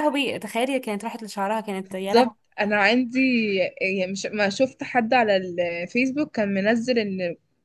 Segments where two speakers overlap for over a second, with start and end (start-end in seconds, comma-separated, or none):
none